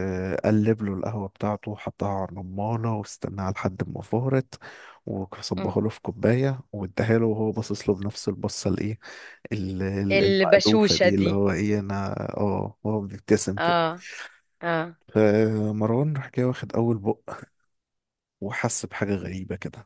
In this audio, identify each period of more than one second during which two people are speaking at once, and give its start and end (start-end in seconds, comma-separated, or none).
10.1-11.4